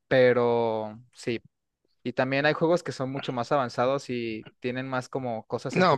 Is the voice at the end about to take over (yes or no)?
yes